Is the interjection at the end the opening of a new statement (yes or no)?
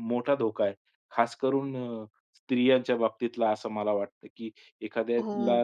no